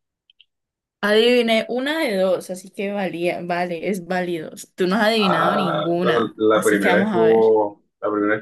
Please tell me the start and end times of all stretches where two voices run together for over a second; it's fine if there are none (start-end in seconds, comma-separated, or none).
5.2-7.5